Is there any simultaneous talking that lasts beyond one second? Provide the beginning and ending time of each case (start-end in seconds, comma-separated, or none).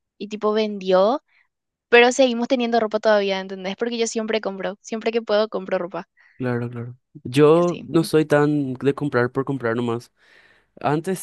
none